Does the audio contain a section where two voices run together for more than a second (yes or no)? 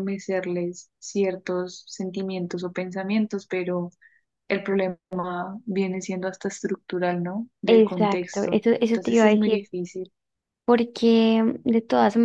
yes